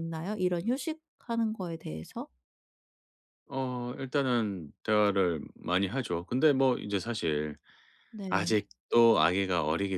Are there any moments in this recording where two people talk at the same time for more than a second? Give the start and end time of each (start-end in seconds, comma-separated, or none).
none